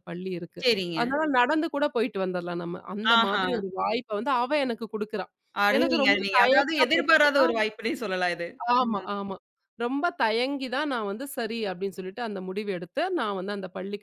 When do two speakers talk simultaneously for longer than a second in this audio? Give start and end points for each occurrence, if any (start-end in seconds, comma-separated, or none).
5.8-7.5